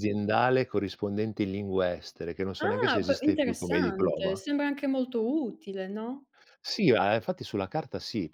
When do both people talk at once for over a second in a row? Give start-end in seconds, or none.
2.6-4.4